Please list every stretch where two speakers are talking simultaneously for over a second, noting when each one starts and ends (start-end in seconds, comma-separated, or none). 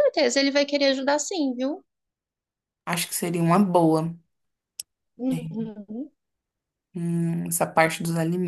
none